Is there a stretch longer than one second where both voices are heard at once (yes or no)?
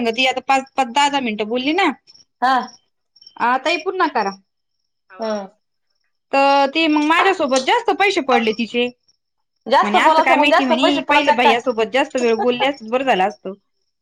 yes